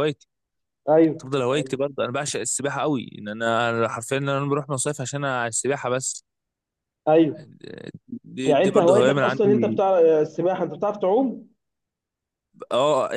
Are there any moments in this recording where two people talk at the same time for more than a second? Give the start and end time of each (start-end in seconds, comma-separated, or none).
8.5-9.8